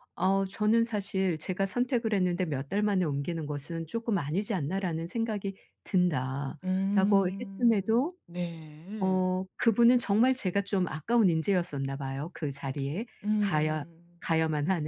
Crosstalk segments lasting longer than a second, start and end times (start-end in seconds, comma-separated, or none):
6.6-8.2